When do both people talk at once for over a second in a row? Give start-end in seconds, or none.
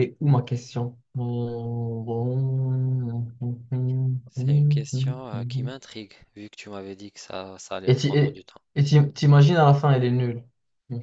none